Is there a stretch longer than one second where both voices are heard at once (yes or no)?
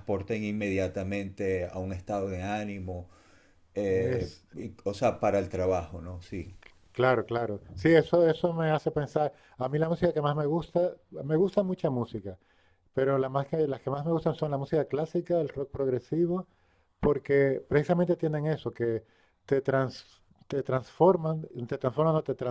no